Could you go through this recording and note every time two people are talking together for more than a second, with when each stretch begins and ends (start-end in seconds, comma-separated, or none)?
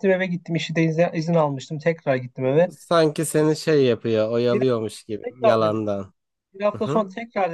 4.5-5.8